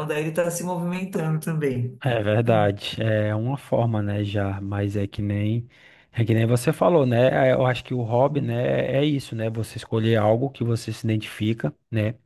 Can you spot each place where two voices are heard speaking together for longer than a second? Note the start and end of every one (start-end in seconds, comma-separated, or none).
none